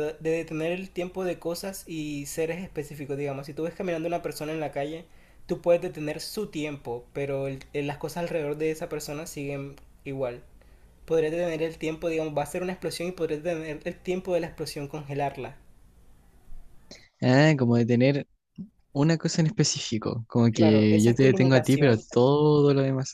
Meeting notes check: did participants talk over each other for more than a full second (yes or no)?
yes